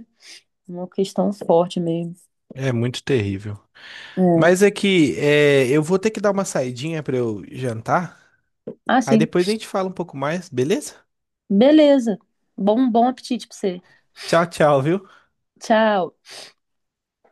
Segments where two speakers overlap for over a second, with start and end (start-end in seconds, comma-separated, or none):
none